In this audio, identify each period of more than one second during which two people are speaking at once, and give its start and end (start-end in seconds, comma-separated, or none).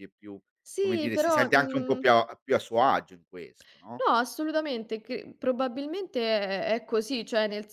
0.8-2.0